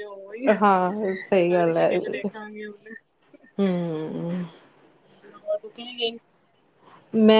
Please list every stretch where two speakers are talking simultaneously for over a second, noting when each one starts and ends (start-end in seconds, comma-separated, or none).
0.6-1.9